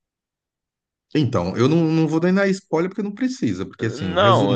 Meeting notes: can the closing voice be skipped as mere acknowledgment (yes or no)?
no